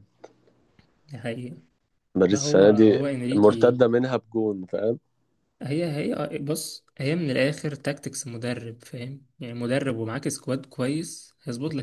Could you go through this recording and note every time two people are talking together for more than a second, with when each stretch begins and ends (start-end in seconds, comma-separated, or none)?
2.3-3.8